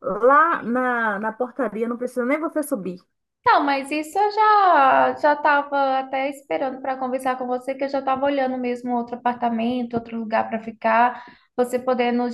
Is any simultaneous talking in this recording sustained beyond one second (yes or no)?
no